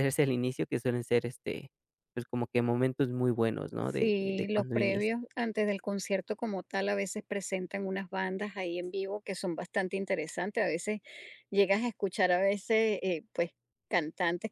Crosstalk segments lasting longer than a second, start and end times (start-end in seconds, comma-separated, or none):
3.8-5.2